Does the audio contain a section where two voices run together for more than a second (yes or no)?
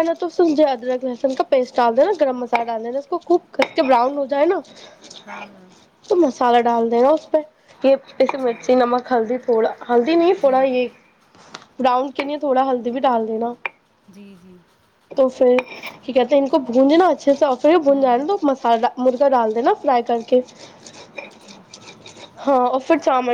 no